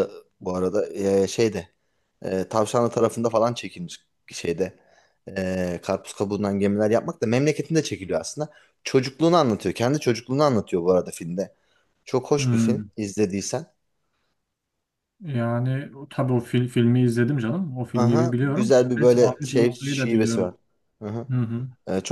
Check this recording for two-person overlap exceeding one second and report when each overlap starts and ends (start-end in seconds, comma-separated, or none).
17.9-20.6